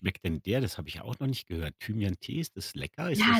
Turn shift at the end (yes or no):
yes